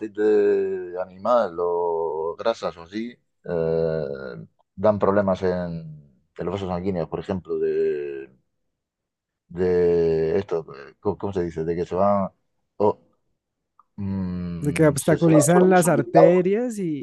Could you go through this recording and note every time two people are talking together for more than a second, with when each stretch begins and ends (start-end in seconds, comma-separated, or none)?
14.6-16.5